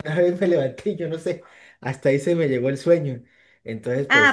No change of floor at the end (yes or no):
no